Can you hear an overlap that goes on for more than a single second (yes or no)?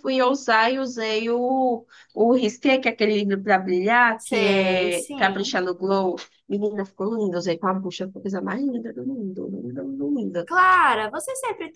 yes